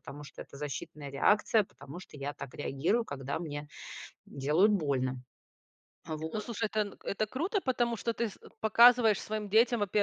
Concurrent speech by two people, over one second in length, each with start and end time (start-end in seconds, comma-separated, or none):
none